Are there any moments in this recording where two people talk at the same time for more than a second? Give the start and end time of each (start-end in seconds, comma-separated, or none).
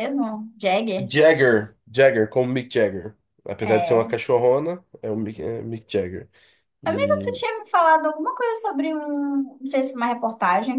none